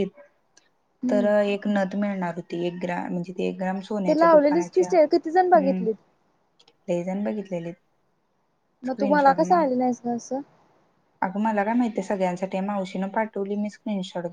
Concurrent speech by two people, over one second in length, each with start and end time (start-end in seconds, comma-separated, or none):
4.1-5.8